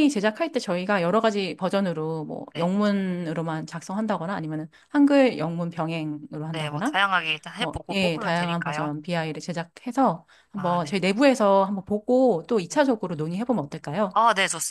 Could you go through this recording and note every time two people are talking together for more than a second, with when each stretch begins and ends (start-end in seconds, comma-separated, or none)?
7.6-8.9